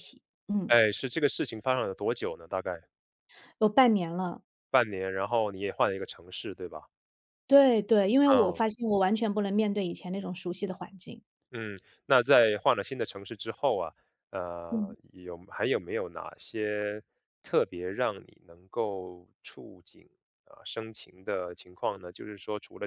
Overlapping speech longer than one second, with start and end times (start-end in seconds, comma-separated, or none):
none